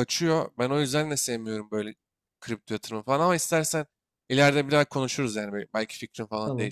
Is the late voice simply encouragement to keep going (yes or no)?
no